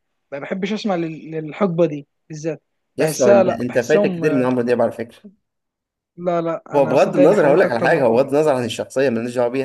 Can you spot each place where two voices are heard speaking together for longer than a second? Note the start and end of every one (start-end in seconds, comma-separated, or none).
3.0-4.5, 6.7-8.3